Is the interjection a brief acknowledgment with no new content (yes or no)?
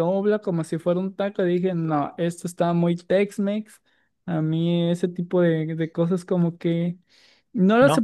yes